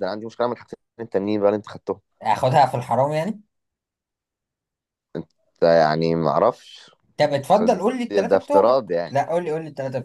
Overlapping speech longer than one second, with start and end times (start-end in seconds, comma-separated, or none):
7.5-9.2